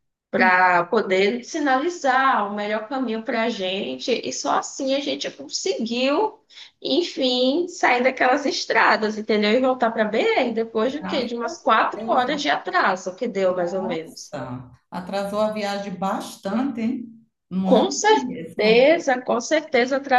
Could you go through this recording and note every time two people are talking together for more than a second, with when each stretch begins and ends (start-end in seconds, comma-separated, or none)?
10.8-12.3, 17.6-18.9